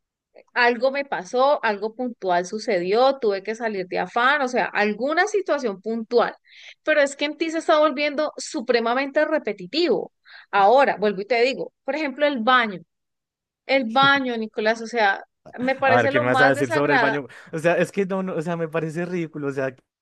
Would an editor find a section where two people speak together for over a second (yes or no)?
yes